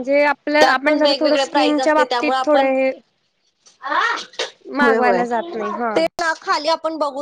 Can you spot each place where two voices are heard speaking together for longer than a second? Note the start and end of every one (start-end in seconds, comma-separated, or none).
0.6-2.7